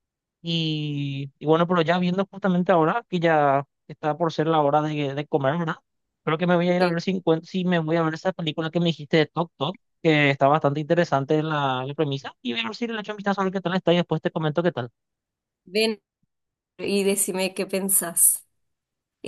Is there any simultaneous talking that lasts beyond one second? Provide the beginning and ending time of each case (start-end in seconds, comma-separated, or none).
none